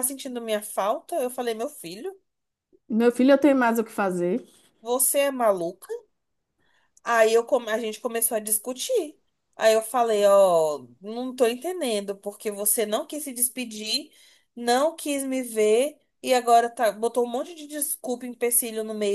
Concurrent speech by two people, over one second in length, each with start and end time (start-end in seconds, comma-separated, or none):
none